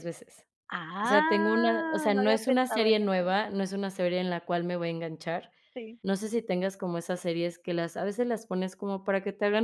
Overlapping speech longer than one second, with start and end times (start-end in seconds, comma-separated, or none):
1.0-3.3